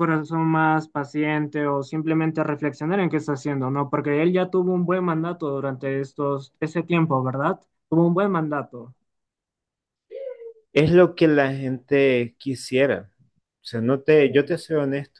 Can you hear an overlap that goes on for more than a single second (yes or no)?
no